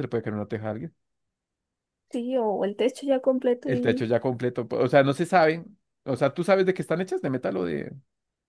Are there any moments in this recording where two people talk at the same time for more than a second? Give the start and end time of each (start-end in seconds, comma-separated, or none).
none